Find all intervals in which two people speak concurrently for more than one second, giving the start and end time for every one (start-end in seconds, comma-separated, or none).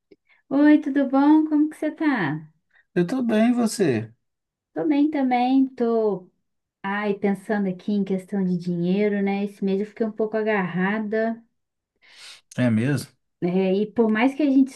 none